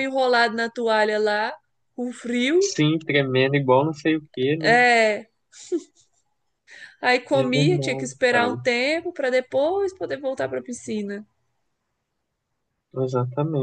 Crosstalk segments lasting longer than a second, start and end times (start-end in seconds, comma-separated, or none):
7.3-8.6